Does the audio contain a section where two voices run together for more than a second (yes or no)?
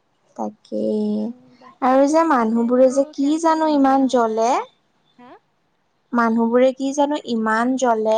yes